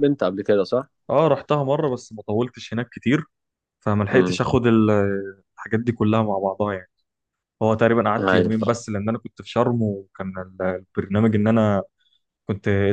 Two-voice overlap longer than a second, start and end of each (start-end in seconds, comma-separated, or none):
none